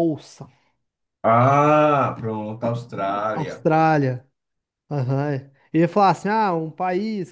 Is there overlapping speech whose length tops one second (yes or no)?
no